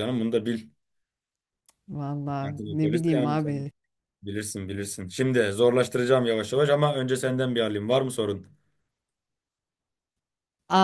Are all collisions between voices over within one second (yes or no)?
no